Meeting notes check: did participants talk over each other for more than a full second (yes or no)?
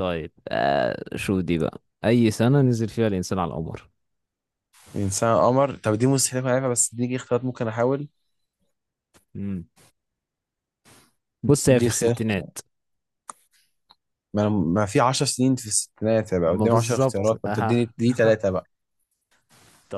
yes